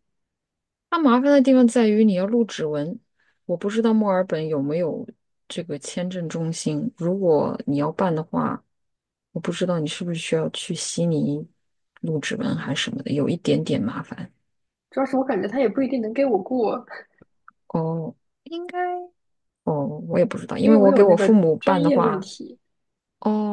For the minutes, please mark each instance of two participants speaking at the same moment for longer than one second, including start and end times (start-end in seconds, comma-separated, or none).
20.6-22.3